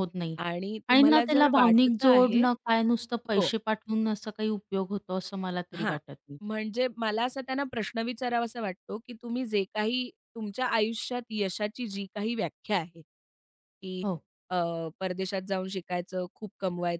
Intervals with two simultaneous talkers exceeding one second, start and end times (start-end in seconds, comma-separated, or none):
0.9-2.4